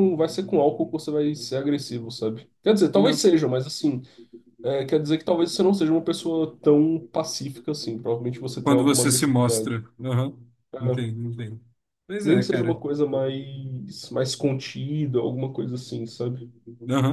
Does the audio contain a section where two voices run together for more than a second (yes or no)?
yes